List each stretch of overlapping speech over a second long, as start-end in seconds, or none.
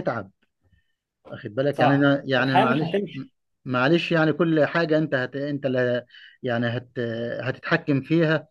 1.7-3.0